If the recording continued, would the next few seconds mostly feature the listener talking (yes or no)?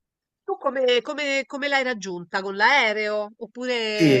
yes